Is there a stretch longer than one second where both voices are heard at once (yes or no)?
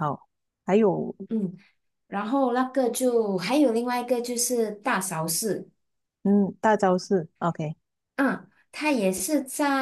no